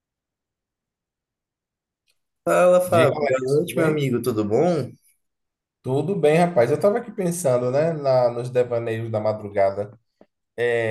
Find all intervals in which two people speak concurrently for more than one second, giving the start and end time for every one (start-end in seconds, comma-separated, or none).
2.9-4.1